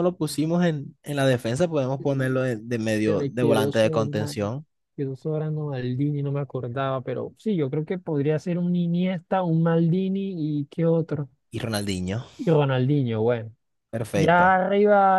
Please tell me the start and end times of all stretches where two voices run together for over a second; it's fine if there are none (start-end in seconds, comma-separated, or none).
3.0-4.5